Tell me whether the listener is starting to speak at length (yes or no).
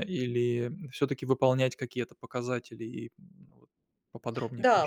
yes